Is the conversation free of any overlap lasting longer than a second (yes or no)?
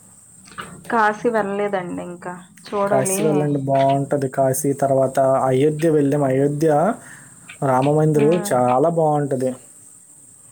yes